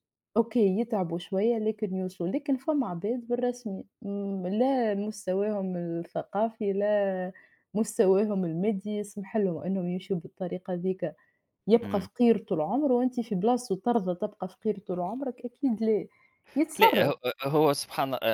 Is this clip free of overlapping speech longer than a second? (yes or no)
yes